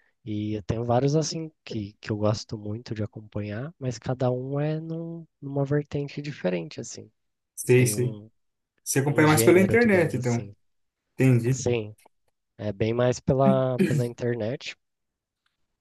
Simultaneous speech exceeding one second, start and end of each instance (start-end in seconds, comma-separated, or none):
9.1-10.5